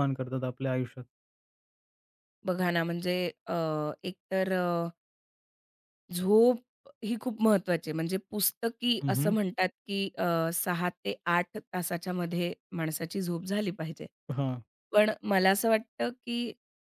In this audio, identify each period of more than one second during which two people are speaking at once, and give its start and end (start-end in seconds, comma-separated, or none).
none